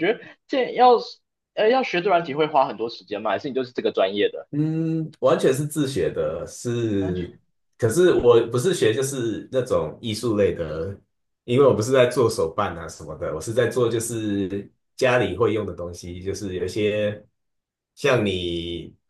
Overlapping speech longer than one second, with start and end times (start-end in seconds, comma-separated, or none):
none